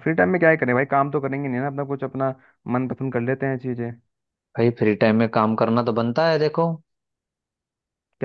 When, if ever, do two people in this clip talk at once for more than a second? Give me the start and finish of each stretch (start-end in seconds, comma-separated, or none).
none